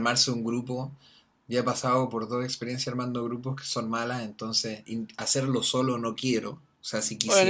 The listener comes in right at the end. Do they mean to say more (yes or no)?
yes